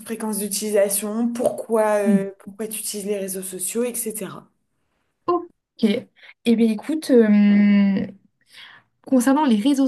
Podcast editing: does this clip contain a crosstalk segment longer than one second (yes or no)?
no